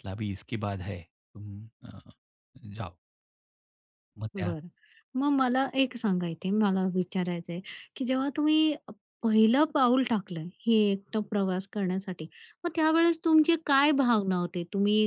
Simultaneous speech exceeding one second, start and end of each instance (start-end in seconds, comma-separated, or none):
none